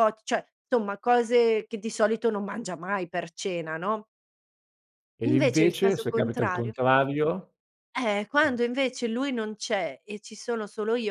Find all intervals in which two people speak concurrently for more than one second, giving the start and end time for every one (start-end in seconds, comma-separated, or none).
5.2-6.7